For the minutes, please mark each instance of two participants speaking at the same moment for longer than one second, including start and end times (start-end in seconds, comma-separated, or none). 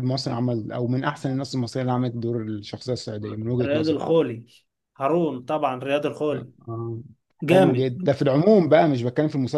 none